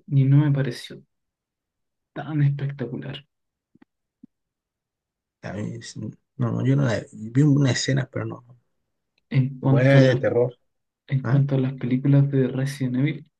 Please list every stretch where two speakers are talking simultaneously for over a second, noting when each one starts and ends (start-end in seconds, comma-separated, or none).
none